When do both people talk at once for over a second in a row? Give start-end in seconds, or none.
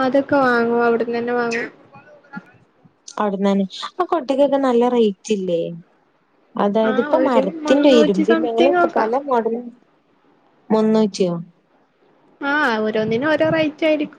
6.9-9.1